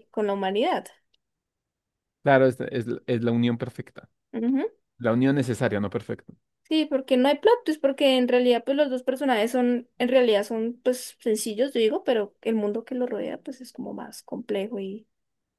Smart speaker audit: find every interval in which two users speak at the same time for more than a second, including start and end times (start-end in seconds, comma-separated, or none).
none